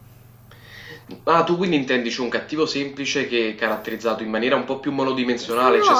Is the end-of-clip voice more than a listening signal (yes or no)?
yes